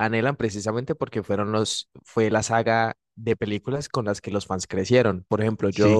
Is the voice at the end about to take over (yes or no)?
yes